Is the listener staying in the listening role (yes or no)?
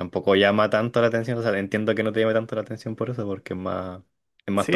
no